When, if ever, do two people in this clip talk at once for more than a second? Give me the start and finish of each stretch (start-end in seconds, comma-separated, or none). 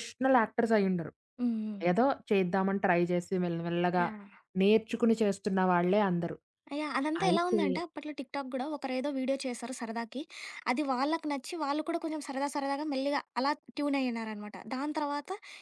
none